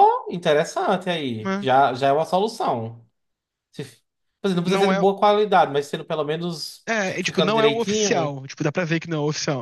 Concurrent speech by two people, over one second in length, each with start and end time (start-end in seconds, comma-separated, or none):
6.9-8.4